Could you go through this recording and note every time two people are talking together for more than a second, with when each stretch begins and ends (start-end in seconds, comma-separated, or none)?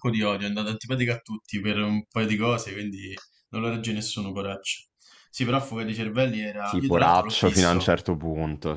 6.6-7.9